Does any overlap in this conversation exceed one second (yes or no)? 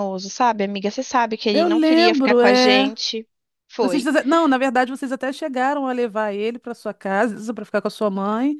yes